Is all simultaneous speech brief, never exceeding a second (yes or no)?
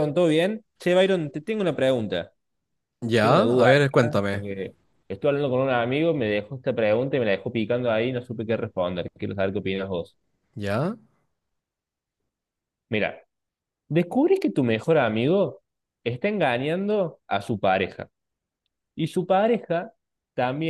no